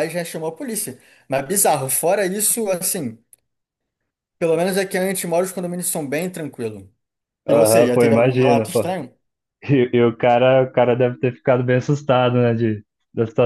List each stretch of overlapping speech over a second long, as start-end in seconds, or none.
7.5-8.9